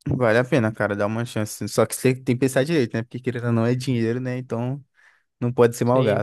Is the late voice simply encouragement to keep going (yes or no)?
yes